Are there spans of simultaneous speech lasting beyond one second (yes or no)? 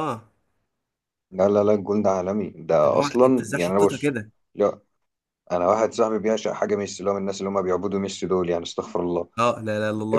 yes